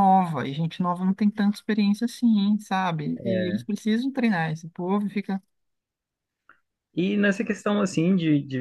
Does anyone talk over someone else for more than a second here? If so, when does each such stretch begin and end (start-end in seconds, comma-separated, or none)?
none